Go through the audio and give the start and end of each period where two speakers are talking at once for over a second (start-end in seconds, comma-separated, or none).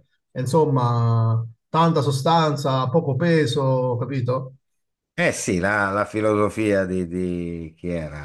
none